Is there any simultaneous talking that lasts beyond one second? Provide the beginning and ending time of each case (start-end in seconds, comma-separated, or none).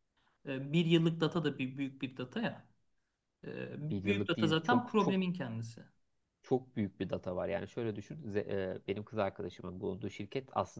3.9-5.2